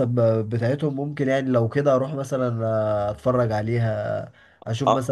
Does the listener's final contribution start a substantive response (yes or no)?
yes